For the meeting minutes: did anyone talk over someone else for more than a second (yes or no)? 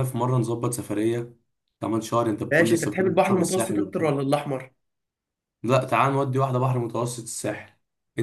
yes